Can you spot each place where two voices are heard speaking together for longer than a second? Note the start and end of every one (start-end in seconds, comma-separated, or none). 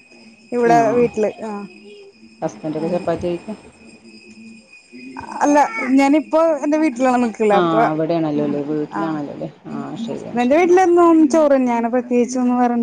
7.6-9.2